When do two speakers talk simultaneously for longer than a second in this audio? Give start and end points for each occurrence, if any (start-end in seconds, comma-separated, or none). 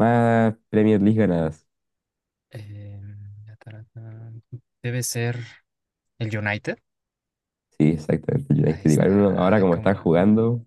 8.6-10.1